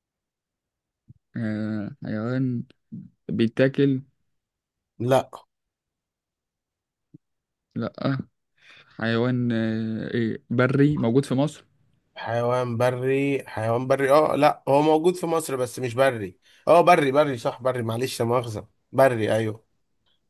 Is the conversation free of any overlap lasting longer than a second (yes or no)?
yes